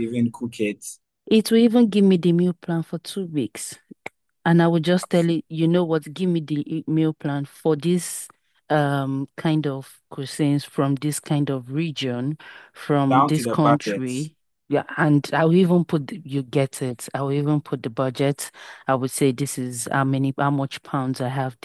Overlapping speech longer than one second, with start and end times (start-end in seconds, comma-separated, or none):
13.1-14.3